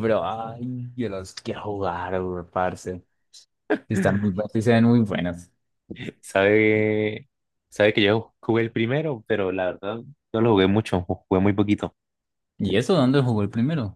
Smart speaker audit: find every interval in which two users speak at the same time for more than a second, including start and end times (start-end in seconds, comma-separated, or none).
none